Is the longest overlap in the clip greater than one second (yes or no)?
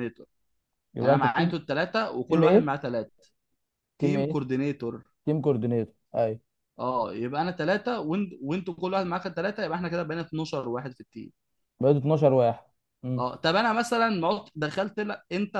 no